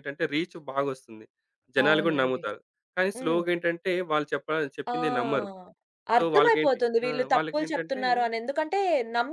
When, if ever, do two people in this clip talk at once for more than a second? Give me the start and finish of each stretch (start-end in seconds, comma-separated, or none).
6.2-8.0